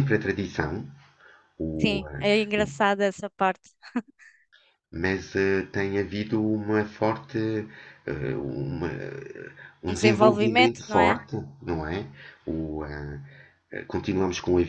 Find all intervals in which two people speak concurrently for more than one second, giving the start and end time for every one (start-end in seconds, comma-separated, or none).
9.9-11.2